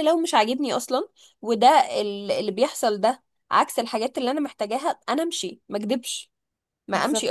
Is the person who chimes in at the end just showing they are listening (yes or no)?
no